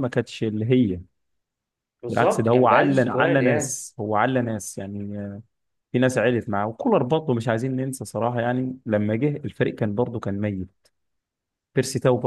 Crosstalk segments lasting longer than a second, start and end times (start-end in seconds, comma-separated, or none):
2.1-3.8